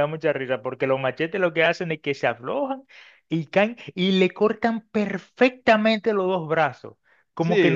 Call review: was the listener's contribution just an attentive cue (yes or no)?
yes